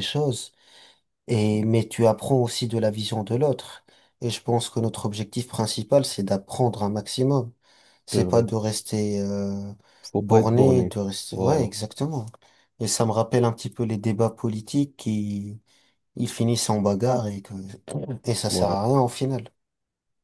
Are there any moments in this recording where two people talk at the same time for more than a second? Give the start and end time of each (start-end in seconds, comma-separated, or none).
10.2-11.7